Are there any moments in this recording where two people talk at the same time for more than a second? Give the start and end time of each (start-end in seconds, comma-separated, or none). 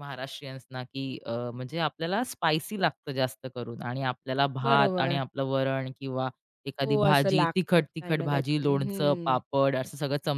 6.8-9.4